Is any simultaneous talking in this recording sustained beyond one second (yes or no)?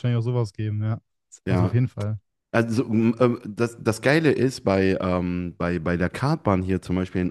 no